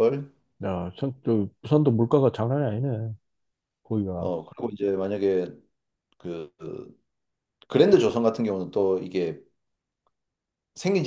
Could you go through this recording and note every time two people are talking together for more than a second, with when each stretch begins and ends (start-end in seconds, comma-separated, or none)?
none